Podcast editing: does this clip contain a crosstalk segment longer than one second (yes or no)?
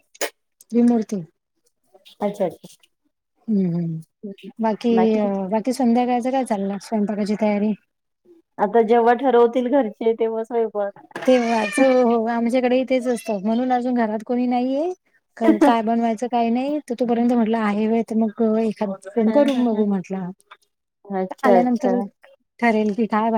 no